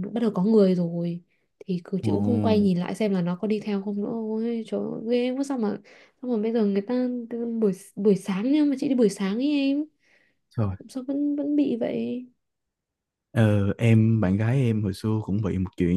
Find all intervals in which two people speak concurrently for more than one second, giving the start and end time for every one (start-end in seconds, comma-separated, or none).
none